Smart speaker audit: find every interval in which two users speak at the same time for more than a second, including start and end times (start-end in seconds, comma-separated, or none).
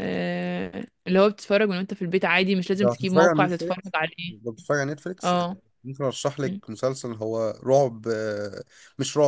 2.8-4.3